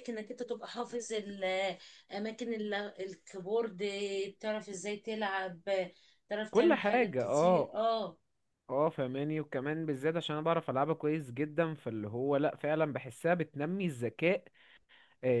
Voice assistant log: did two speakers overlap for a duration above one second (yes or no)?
yes